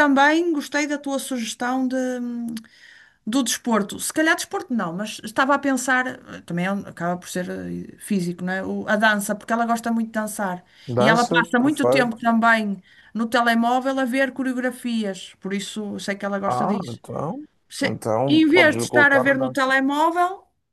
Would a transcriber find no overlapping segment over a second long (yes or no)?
no